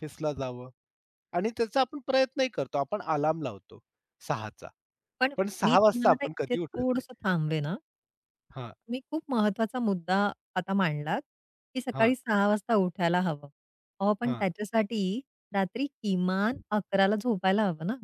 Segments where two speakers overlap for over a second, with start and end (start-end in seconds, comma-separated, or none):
5.4-7.2